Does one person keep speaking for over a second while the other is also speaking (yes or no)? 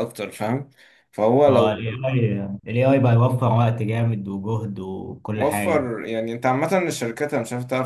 no